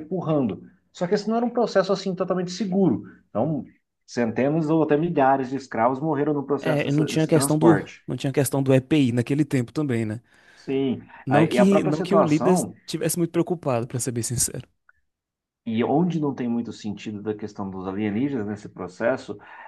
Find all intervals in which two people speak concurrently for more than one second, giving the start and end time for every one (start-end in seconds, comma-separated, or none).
6.6-8.0, 11.2-12.7